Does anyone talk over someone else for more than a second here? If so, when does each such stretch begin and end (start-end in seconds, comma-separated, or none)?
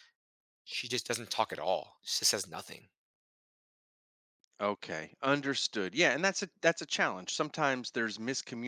none